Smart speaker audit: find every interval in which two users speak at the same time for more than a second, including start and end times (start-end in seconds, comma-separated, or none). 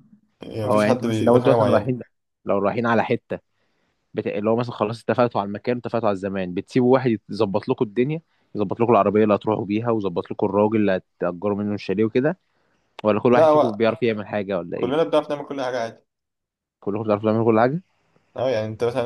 0.6-1.9